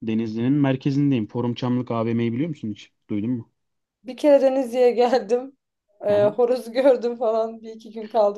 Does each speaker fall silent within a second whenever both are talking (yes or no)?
yes